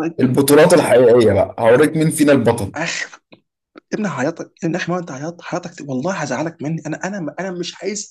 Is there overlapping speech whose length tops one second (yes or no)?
no